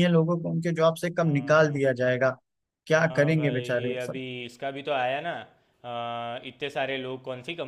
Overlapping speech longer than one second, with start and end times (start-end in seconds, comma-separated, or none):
3.0-4.2